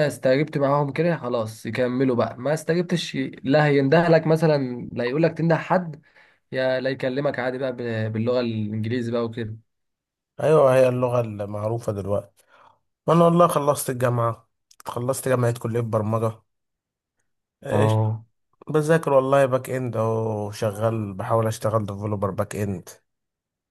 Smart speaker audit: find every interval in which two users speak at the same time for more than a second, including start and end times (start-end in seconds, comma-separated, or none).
none